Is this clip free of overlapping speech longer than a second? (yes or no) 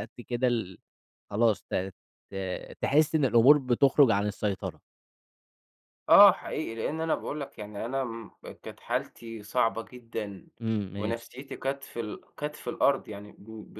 yes